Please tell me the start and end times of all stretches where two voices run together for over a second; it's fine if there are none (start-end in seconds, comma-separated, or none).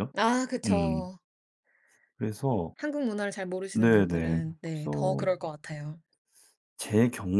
3.7-5.2